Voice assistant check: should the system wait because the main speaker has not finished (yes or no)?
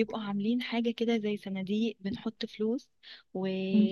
yes